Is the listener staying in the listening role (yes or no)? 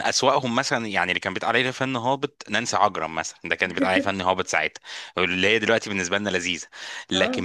yes